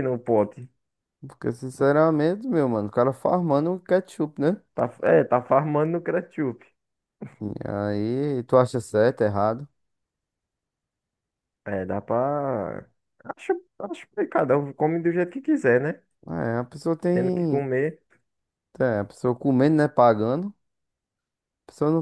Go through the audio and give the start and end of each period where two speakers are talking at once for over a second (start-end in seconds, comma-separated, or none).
none